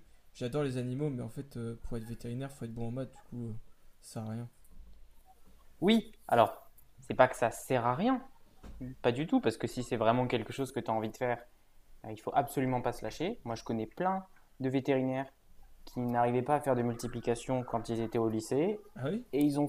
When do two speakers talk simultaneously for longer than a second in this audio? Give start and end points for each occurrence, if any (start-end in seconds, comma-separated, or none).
none